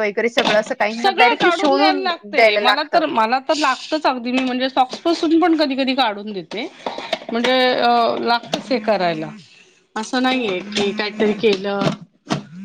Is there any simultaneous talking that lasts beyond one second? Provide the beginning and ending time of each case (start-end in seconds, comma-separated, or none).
1.0-3.0